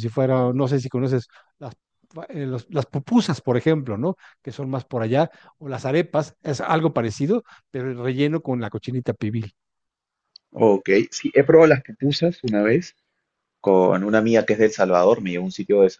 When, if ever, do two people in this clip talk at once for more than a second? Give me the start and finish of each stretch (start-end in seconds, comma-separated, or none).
none